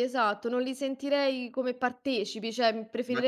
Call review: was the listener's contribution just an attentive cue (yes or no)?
yes